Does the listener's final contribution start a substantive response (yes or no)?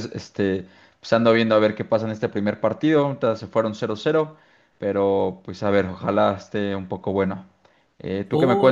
yes